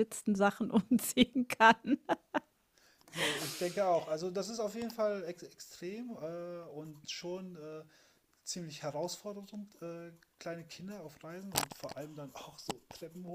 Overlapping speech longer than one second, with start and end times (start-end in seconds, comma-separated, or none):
none